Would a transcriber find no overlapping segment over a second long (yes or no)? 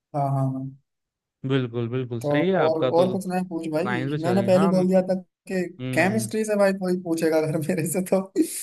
no